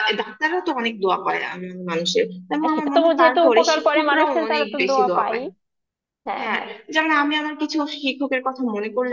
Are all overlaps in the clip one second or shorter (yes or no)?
no